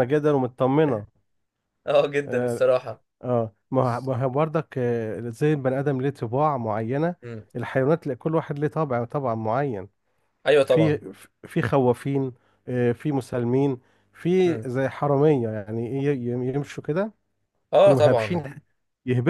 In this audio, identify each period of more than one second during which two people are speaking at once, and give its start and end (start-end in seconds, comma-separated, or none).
none